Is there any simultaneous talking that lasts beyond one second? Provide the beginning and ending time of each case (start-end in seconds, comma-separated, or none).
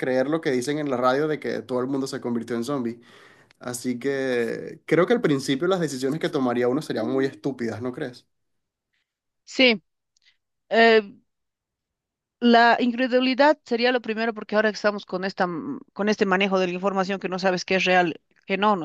none